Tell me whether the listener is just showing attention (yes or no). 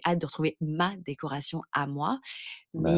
yes